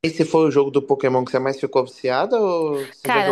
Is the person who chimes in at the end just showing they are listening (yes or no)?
no